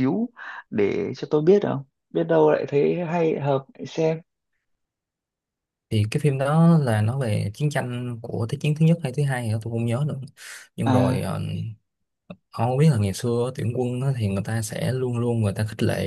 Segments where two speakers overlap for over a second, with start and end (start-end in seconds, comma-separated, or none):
none